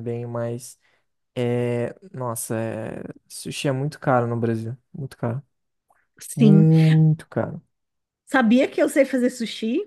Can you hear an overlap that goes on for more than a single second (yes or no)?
no